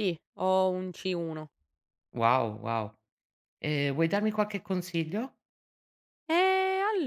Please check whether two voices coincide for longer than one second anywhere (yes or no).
no